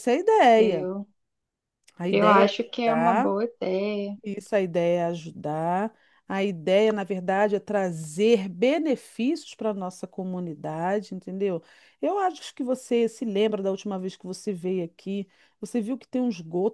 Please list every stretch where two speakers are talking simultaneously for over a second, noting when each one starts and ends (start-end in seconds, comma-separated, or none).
2.1-3.3